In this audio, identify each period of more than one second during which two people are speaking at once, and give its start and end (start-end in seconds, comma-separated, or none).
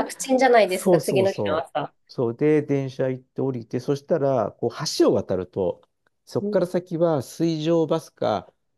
0.7-1.9